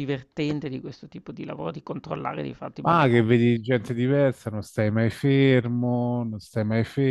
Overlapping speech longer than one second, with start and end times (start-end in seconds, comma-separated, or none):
none